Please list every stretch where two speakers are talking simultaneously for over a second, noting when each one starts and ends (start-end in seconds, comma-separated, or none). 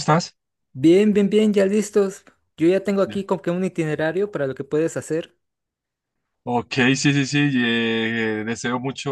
none